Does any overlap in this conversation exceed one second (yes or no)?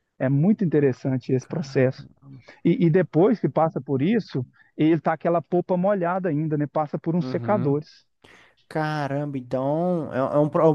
no